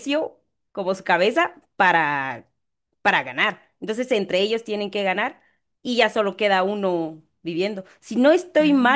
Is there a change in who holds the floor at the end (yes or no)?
no